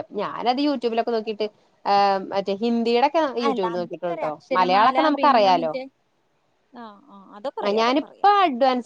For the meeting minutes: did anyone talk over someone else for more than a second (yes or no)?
yes